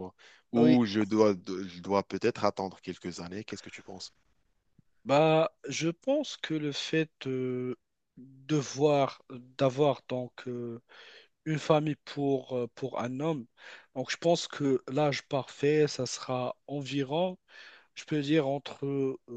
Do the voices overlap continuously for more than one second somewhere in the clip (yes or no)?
no